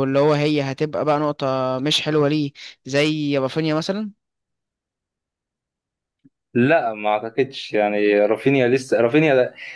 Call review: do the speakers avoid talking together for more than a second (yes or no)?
yes